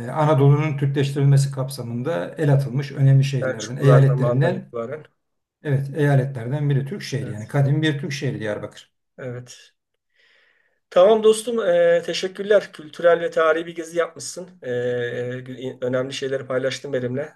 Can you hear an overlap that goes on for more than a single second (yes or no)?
yes